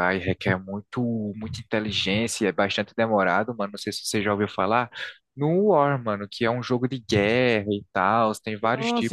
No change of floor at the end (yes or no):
no